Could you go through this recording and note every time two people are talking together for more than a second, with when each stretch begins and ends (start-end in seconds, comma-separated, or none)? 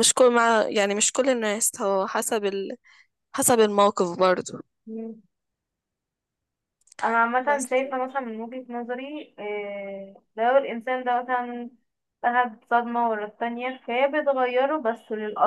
none